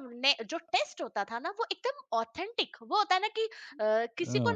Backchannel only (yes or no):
yes